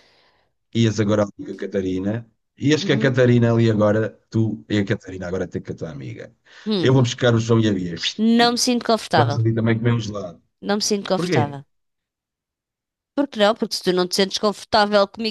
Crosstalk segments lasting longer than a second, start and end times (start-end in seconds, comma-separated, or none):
none